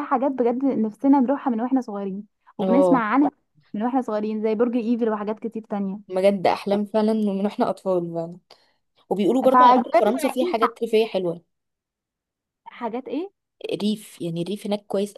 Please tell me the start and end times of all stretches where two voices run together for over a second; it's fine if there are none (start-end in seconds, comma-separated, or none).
9.4-10.7